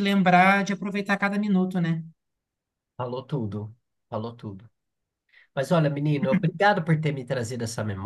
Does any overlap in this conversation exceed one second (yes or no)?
no